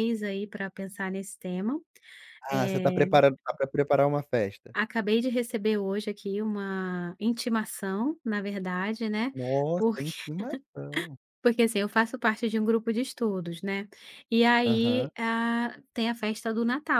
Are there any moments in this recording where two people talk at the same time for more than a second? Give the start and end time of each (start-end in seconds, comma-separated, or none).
none